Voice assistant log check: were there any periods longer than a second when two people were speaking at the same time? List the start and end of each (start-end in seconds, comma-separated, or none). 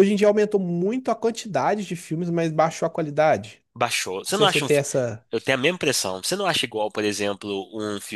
none